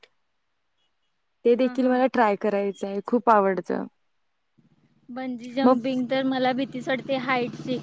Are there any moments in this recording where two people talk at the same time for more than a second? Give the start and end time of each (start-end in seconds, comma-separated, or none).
none